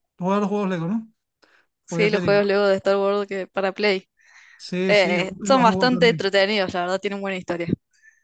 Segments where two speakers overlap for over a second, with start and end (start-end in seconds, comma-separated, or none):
4.9-6.3